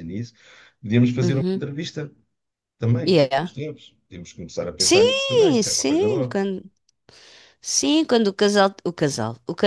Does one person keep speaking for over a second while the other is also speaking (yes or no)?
yes